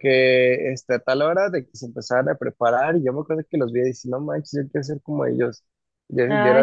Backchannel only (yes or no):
yes